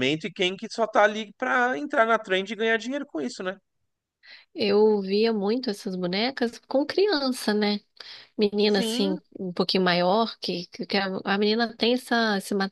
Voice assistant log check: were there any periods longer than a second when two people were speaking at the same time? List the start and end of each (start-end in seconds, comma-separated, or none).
none